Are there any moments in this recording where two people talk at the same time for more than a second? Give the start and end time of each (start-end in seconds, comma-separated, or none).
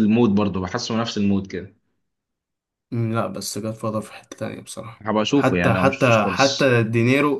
5.0-6.7